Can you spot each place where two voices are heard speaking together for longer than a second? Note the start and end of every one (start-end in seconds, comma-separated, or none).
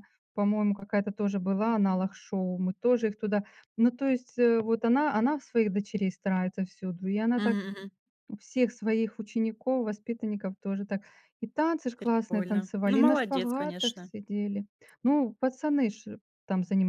12.0-14.1